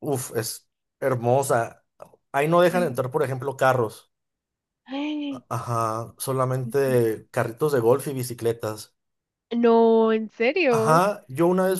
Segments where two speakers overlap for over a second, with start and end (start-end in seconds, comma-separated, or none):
none